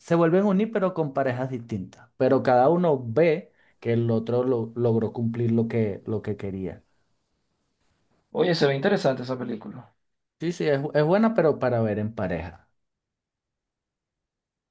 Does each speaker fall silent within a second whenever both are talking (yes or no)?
yes